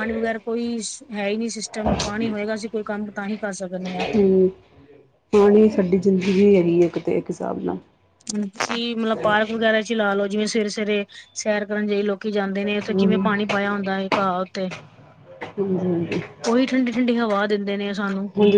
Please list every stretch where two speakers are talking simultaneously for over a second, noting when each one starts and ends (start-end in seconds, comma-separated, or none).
none